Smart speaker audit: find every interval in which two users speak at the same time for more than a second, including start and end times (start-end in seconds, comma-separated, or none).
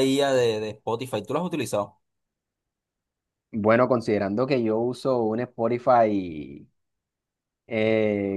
none